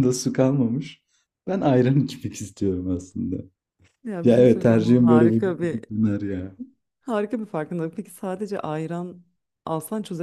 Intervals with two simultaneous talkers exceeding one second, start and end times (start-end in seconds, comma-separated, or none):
4.2-5.8